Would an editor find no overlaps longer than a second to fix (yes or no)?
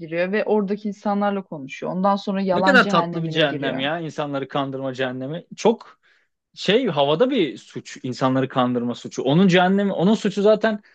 no